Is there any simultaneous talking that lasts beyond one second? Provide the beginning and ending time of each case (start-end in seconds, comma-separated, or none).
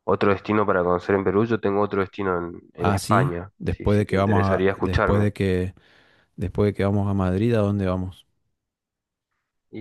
2.8-5.3